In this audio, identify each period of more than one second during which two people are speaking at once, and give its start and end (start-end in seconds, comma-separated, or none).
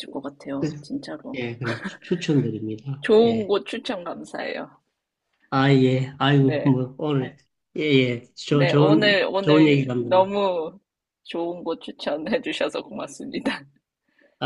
8.5-10.4